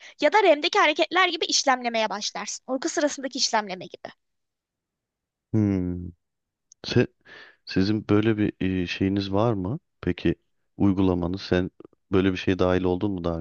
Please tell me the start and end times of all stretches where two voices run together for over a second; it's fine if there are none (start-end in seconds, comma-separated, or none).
none